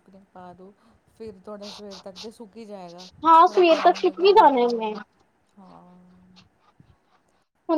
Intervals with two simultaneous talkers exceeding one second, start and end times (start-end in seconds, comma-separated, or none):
3.5-4.9